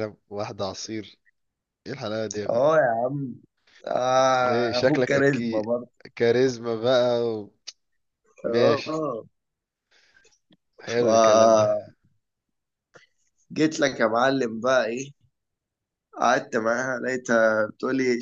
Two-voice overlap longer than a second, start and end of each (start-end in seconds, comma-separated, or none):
4.4-5.7